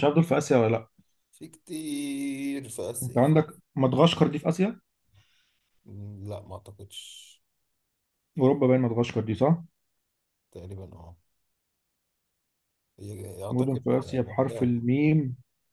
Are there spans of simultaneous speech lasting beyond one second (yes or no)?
yes